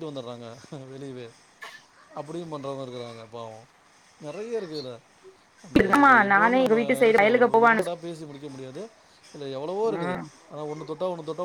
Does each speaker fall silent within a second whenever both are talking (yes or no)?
no